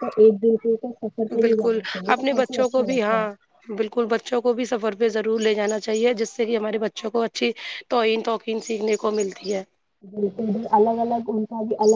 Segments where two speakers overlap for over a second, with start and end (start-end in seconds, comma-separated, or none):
1.4-3.3